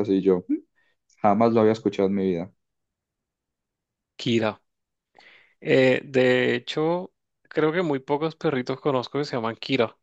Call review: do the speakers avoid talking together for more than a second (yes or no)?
yes